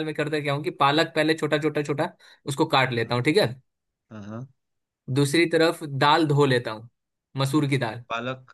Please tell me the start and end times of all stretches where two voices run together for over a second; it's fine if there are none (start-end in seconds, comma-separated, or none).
none